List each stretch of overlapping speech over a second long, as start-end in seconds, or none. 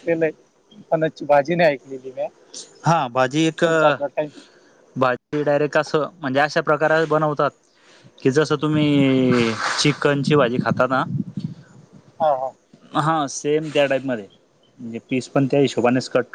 none